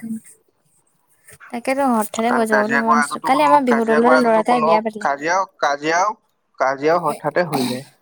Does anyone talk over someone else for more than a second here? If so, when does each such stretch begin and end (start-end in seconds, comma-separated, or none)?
2.5-5.1